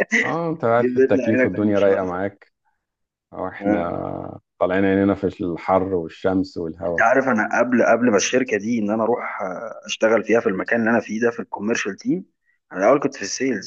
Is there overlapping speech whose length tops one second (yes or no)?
yes